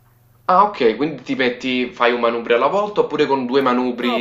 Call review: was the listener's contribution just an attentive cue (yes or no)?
no